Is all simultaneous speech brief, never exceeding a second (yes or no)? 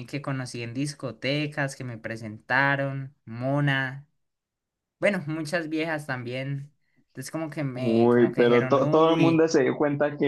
no